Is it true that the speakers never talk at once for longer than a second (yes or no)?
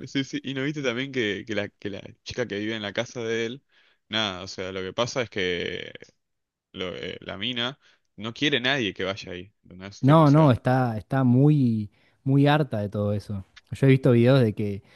yes